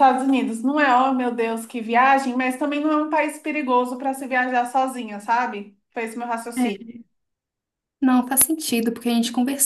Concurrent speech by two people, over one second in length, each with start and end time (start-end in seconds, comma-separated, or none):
none